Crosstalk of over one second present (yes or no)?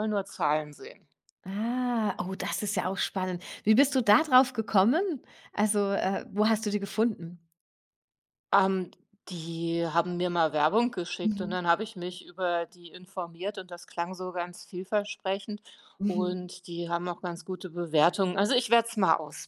no